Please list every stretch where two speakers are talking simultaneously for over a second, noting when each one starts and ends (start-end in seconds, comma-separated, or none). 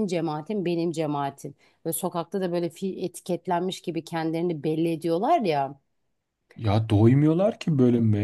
none